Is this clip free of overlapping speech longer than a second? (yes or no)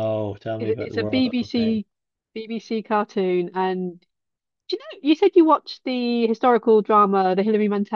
no